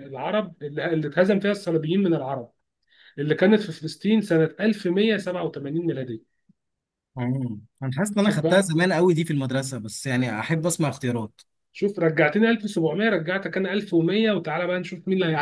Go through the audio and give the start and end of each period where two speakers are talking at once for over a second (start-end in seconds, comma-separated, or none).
none